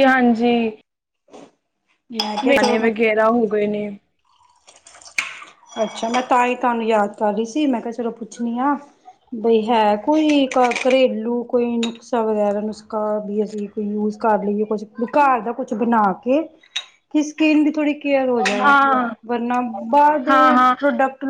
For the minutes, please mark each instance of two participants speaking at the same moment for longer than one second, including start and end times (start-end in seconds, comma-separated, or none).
none